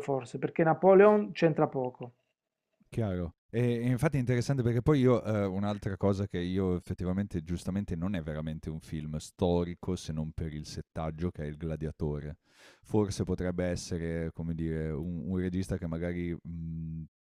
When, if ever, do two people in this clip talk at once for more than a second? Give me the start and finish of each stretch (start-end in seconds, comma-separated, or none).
none